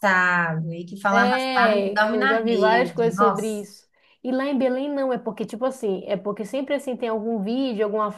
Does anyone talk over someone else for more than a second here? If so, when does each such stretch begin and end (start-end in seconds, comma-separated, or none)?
1.1-3.7